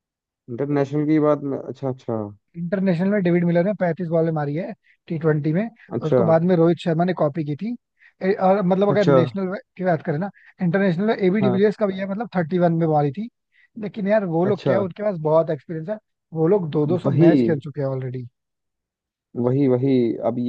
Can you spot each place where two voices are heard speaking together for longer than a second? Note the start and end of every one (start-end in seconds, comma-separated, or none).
none